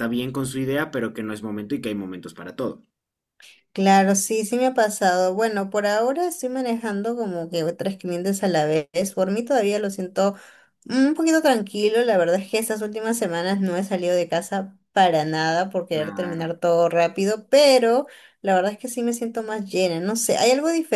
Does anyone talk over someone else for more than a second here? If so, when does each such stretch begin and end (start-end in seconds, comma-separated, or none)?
none